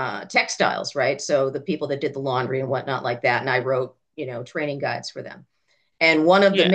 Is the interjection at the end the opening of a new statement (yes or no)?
no